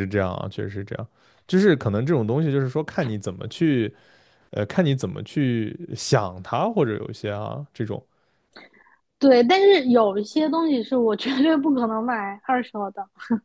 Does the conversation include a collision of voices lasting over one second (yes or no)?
no